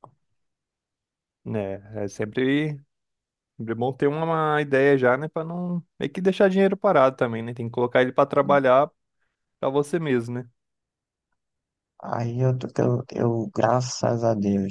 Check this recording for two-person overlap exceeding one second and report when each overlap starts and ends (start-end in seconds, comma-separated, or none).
none